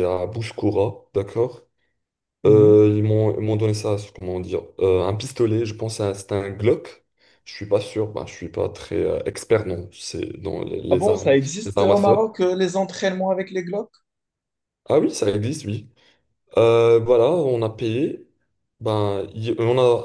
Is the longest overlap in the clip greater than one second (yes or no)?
yes